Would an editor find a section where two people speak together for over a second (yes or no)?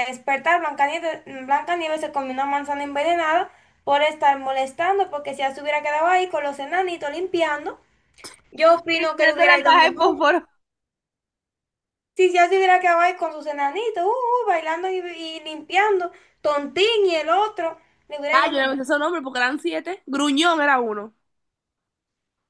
yes